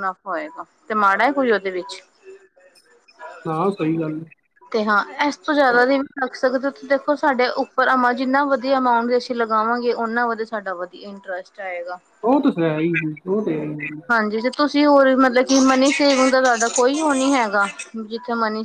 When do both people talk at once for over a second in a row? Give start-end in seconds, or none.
none